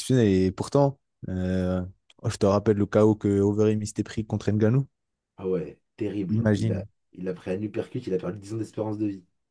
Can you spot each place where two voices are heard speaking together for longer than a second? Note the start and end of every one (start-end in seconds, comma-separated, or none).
none